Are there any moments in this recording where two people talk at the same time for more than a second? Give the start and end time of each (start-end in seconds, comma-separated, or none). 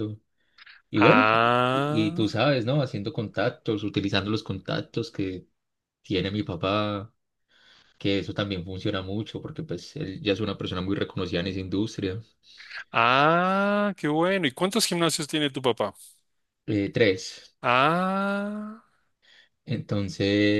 0.9-2.3